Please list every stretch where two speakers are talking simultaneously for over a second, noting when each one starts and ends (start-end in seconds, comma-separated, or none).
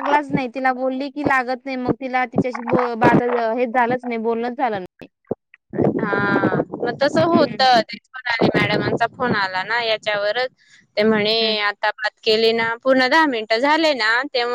none